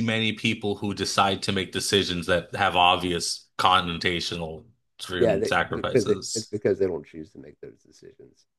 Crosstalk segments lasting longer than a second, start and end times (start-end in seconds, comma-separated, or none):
5.2-6.5